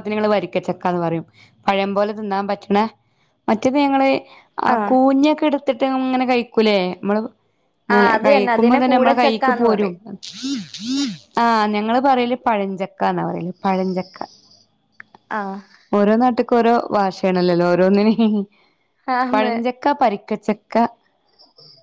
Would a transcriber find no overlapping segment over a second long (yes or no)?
no